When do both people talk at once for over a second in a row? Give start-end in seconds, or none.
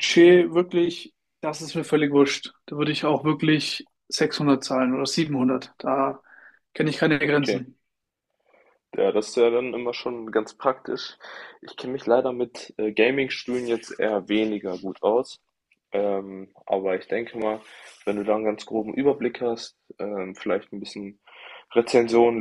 none